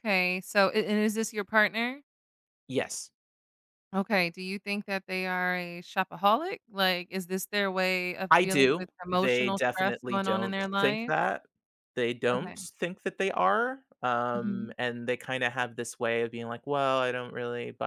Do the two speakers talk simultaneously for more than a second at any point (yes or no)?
yes